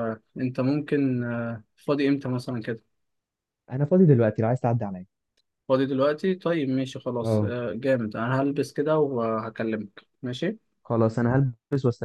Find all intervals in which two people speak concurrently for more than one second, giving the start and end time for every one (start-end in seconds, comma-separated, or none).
none